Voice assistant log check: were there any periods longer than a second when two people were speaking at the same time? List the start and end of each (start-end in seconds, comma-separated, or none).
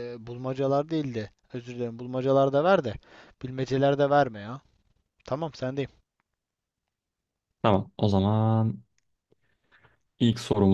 none